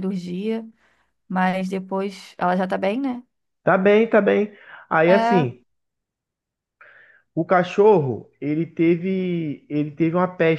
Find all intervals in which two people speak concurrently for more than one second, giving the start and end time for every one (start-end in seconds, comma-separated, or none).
none